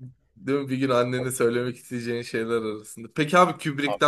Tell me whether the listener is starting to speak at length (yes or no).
no